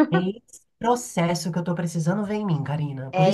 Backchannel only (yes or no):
yes